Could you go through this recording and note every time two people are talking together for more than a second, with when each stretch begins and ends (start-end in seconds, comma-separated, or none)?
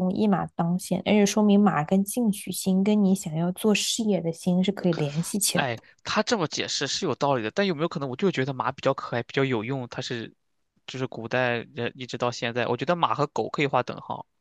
none